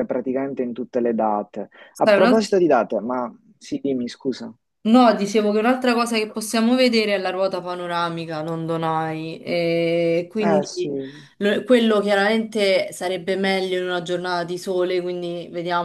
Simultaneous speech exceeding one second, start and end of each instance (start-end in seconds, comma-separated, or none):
none